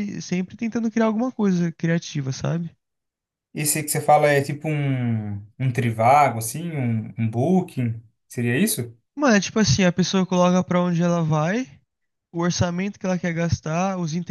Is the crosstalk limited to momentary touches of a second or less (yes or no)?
yes